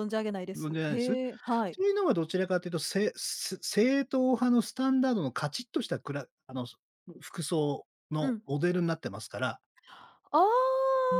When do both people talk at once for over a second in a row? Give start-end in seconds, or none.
0.6-1.8